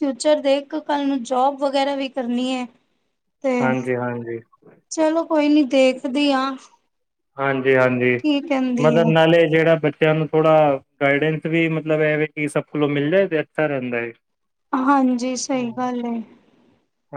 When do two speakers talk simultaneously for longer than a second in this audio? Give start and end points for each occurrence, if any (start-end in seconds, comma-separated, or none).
none